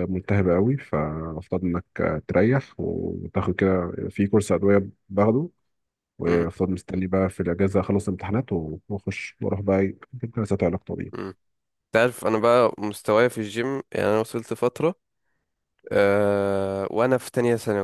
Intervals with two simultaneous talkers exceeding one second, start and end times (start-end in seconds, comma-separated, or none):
none